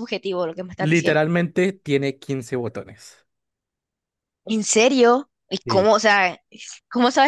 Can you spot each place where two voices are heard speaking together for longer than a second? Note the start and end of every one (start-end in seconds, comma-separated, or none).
none